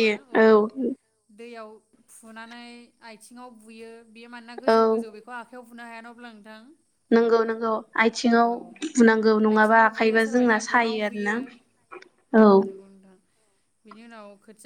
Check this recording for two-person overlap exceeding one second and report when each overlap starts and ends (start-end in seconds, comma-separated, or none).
9.6-11.4